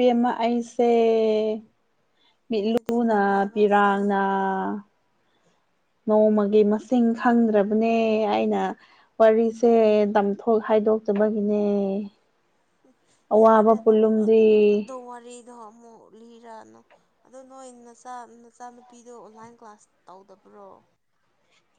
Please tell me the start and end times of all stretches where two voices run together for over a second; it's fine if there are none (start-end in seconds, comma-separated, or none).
2.6-3.9